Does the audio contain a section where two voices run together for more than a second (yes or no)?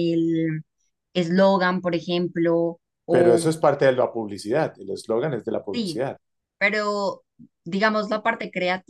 no